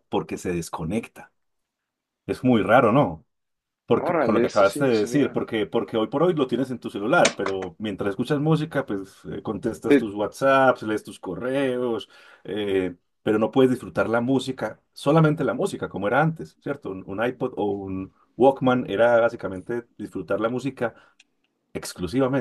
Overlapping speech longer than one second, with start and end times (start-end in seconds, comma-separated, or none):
4.0-5.4